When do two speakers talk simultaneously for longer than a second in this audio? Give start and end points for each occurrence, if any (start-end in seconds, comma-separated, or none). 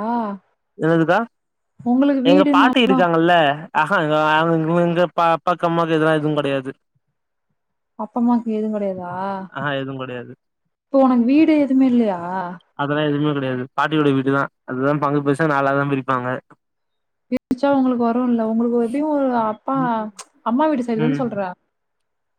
none